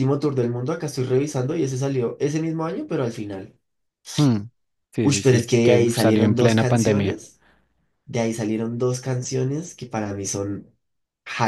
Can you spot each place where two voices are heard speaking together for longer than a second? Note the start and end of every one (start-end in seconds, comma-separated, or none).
5.0-7.2